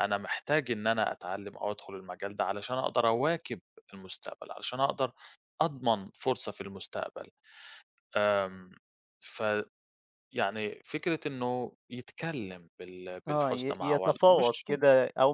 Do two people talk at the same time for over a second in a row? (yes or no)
yes